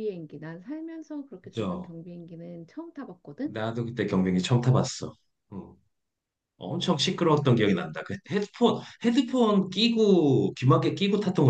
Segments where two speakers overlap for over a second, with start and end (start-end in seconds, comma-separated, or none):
none